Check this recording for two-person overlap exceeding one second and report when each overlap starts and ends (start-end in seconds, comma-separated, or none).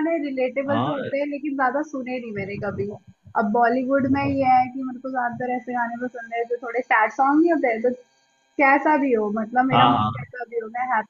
none